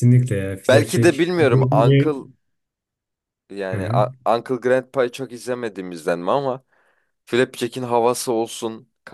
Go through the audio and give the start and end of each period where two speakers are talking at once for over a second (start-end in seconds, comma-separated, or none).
0.7-2.0